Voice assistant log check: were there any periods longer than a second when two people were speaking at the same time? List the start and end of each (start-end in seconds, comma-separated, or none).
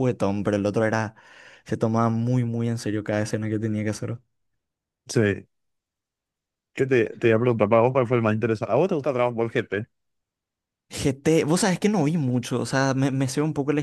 none